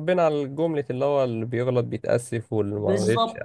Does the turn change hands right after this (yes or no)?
yes